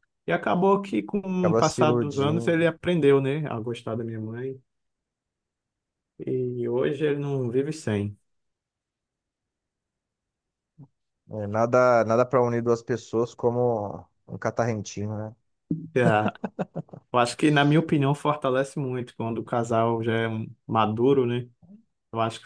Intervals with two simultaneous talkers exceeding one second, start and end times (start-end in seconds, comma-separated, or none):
1.4-2.6